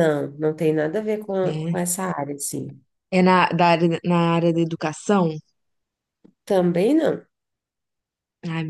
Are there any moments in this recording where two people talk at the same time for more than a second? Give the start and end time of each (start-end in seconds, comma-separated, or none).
none